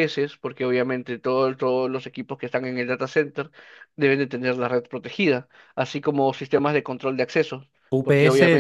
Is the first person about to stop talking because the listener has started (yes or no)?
yes